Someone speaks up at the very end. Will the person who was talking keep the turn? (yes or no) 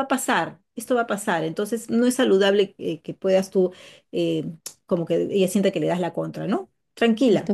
no